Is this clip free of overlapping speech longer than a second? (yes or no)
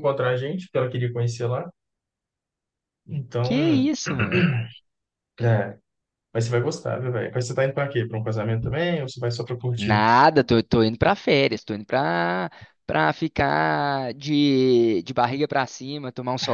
yes